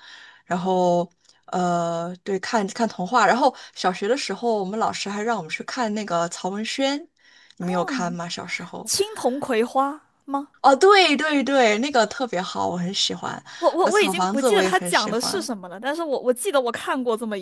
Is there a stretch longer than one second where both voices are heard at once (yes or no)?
yes